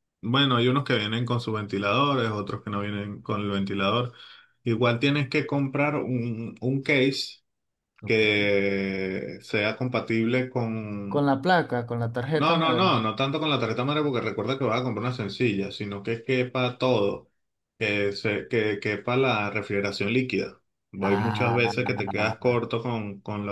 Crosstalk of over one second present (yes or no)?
no